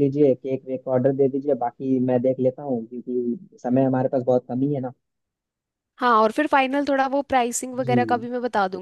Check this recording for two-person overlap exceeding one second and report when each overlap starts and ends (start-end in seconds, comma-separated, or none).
none